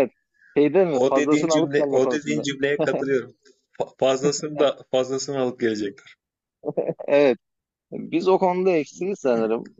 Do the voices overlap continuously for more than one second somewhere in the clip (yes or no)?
yes